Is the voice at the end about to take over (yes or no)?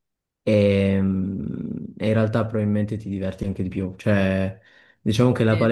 no